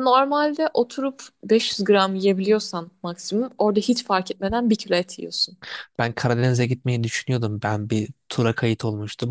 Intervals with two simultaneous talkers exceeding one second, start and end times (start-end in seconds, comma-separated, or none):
none